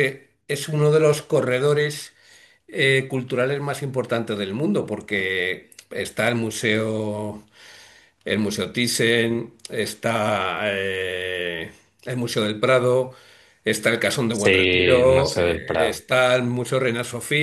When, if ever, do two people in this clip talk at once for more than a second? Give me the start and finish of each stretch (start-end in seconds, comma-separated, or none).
14.3-16.0